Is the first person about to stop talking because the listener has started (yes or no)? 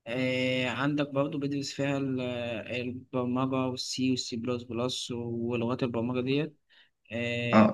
yes